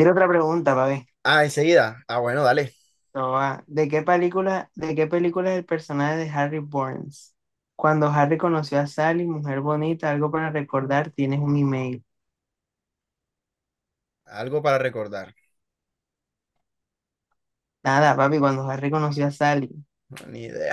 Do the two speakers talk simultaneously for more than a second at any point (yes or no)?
no